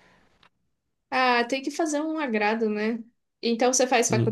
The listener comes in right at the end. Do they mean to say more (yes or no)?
no